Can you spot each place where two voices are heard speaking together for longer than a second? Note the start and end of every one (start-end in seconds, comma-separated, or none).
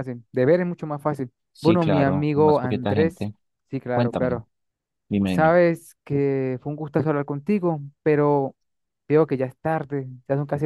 1.5-3.3